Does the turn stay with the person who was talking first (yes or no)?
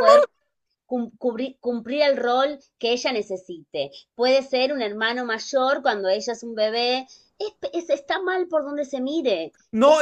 no